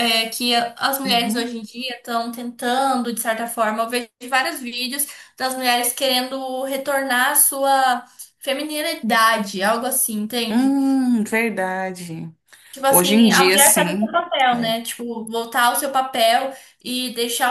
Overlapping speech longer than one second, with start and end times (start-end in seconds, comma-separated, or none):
12.9-14.7